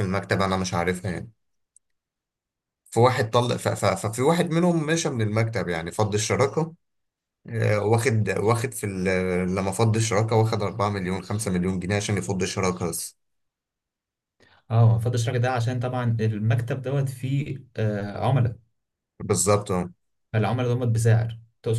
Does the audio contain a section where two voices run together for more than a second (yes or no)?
no